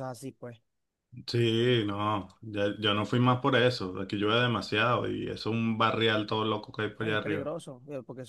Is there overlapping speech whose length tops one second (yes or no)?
no